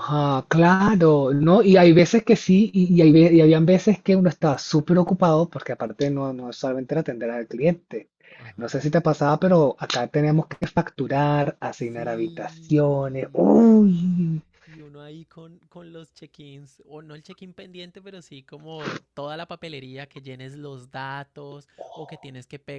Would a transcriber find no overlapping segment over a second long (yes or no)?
no